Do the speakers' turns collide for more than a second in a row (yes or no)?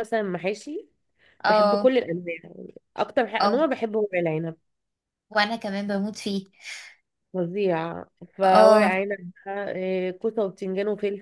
no